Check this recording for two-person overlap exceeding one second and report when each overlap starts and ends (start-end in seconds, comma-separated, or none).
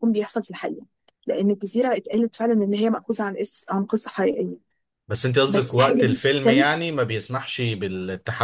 5.5-6.7